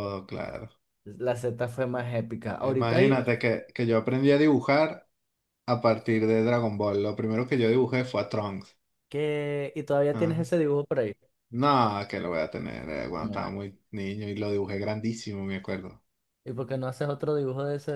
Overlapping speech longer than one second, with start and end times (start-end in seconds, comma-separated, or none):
none